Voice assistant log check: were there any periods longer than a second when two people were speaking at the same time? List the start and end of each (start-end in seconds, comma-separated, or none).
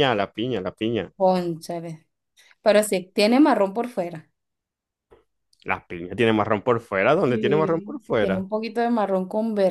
7.2-8.4